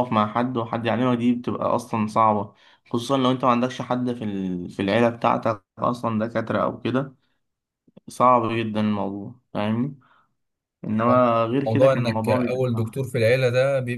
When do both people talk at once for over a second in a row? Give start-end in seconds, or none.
11.7-13.0